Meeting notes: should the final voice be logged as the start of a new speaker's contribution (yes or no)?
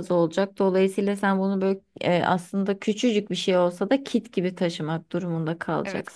yes